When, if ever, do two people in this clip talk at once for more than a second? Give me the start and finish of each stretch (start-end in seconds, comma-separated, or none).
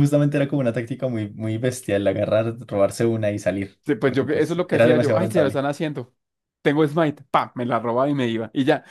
3.9-5.7